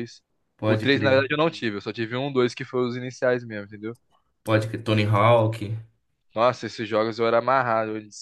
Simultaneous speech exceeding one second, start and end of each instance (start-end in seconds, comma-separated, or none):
none